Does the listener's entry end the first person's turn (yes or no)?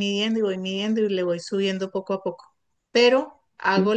no